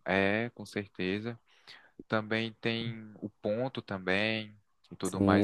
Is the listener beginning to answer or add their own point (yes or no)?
yes